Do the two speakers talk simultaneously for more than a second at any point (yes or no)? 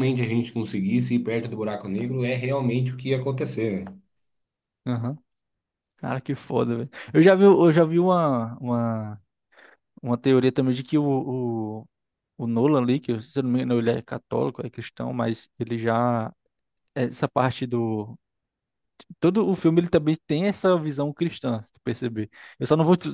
no